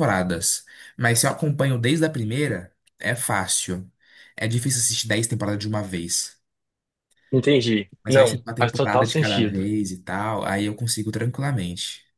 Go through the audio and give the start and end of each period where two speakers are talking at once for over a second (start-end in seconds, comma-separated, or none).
8.0-9.7